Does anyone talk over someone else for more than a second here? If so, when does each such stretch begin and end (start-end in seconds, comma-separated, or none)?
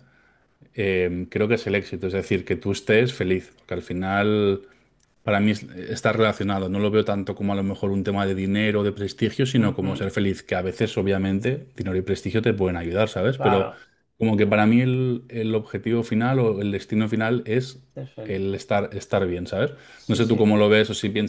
none